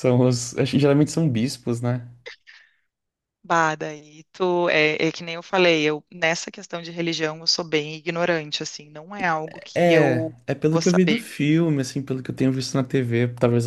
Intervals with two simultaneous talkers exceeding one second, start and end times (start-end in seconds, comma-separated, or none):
9.8-11.2